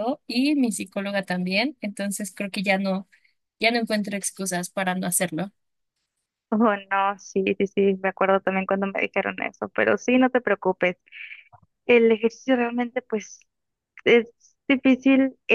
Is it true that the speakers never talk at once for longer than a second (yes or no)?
yes